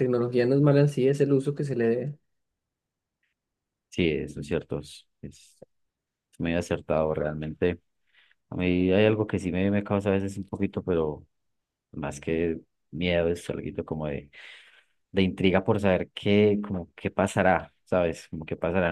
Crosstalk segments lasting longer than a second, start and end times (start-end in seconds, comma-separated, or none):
none